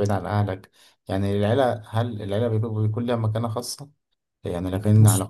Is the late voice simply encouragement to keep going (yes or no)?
yes